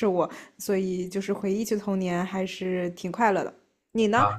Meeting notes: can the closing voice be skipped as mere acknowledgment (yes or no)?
no